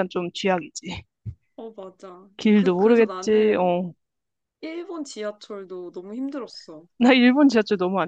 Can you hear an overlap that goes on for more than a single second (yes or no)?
yes